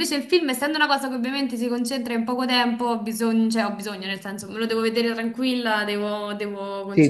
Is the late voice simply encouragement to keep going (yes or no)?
no